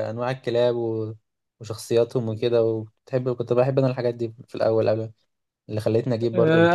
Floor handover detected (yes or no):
yes